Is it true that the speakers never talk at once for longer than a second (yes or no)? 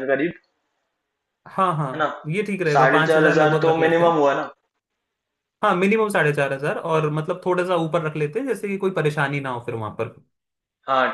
no